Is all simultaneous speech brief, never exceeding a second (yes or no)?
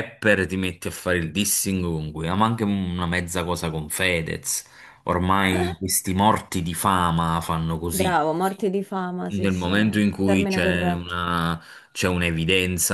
no